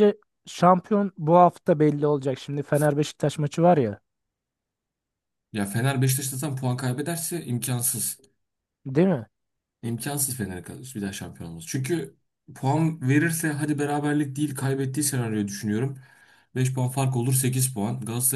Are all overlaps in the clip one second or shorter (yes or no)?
yes